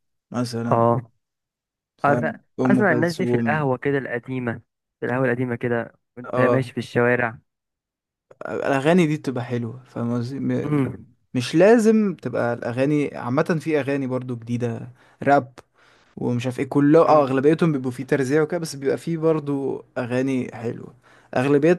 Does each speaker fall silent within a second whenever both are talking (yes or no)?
no